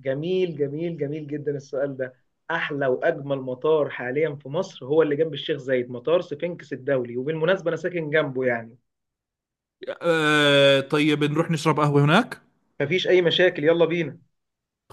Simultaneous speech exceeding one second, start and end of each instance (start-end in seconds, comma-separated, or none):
none